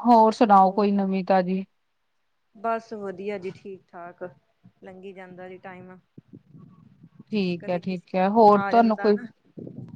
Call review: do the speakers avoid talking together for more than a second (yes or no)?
no